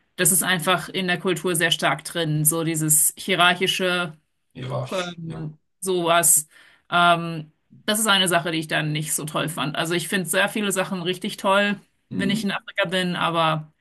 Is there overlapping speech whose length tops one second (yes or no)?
no